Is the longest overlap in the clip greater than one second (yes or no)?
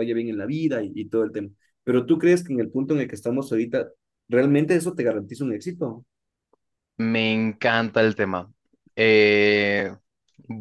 no